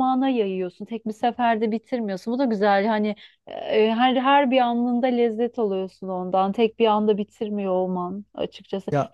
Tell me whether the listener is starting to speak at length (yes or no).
no